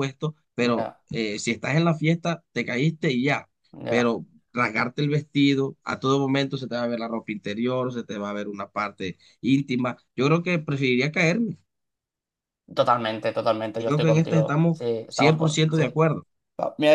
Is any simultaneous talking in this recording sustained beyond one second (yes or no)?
yes